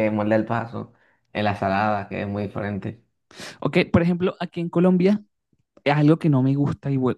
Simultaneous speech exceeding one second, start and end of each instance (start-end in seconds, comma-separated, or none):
none